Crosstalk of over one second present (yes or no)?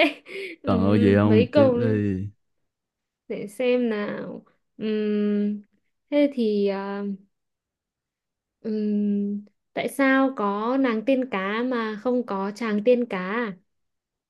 yes